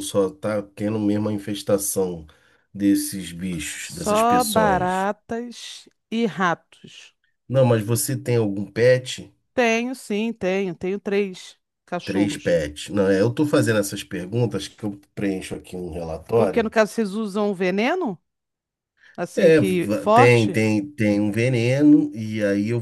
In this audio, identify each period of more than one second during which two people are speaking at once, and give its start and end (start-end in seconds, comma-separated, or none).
3.8-5.1, 19.4-20.6